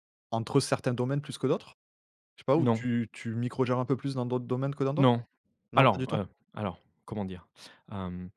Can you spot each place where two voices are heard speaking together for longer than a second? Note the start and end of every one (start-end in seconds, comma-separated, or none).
none